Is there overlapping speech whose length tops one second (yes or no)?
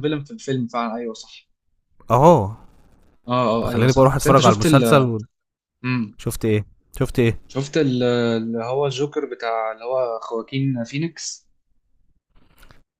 yes